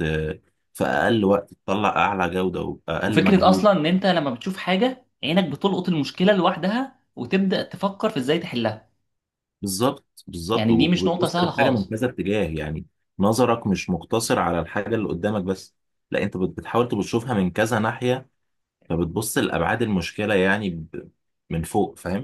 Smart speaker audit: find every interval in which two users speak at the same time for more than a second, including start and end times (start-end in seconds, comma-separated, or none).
10.5-11.9